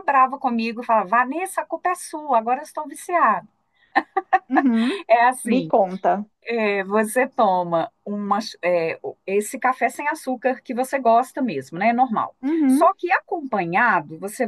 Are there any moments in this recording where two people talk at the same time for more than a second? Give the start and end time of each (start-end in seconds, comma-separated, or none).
none